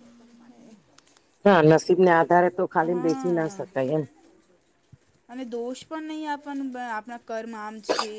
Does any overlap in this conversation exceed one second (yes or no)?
no